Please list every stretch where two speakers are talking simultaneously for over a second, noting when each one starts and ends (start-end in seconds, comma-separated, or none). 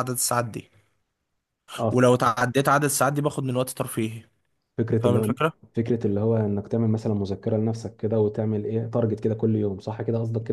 none